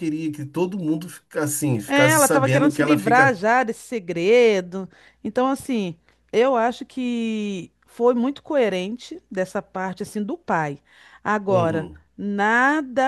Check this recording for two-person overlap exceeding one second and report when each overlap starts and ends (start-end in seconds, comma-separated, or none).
1.9-3.4